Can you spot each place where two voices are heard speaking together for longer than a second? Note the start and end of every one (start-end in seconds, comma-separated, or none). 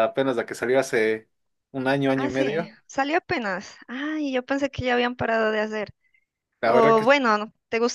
none